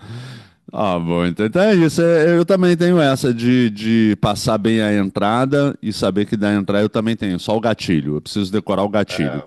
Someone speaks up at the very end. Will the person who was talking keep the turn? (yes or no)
yes